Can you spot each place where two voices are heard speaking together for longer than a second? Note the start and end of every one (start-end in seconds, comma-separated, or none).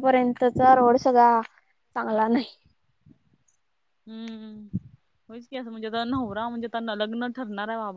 none